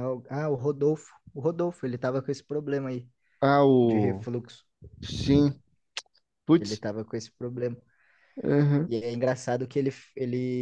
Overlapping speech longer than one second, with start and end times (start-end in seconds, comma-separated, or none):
none